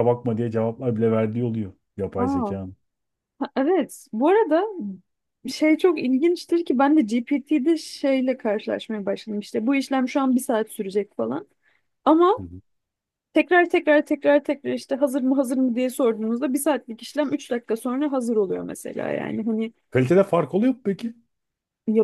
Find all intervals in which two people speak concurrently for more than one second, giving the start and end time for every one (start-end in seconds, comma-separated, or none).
none